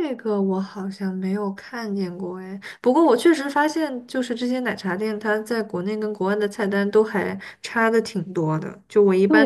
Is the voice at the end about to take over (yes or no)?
yes